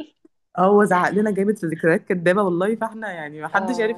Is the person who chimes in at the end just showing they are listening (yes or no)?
no